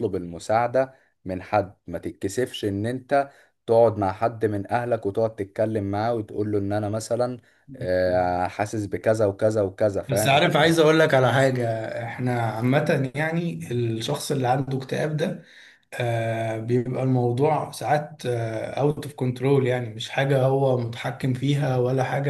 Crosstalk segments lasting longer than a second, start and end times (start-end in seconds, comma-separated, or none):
none